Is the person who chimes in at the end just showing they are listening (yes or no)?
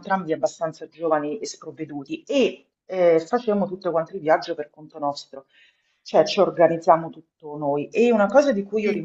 yes